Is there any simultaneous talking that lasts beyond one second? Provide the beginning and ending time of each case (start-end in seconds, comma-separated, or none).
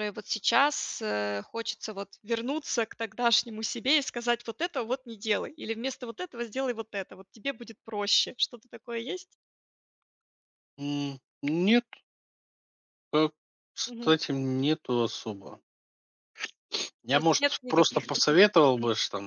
17.1-18.4